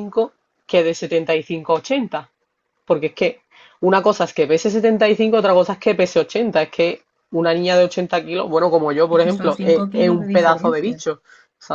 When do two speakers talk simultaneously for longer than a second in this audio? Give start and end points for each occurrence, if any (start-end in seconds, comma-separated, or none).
9.1-11.0